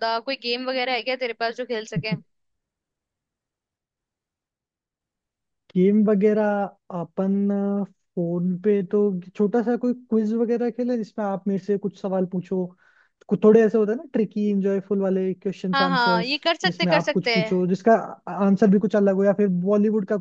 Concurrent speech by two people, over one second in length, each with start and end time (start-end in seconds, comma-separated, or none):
15.7-17.6